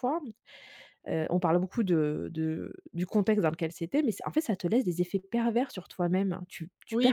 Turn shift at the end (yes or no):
yes